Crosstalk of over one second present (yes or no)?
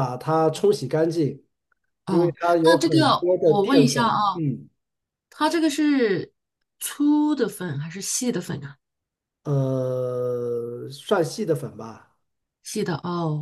yes